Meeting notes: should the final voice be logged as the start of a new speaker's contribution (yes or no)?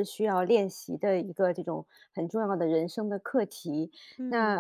no